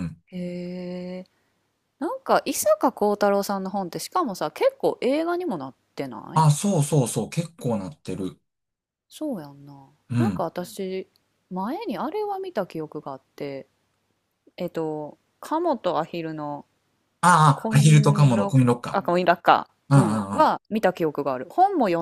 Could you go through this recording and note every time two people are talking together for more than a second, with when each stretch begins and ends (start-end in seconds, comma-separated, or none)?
17.5-19.0